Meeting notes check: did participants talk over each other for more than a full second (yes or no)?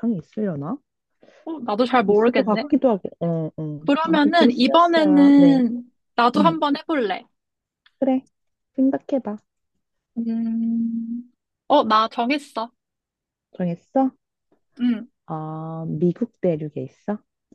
yes